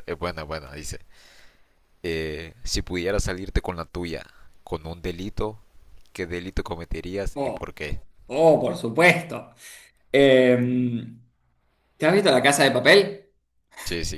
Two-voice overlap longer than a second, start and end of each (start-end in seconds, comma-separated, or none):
none